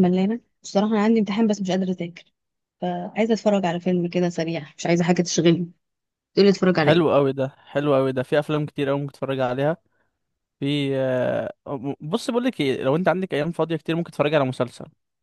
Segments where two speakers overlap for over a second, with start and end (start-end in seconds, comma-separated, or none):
none